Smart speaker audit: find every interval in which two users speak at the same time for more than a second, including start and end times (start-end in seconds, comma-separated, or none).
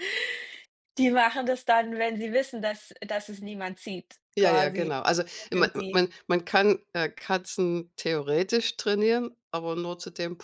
none